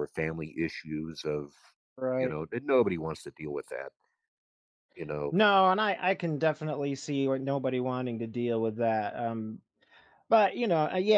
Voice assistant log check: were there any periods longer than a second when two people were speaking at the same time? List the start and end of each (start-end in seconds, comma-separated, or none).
none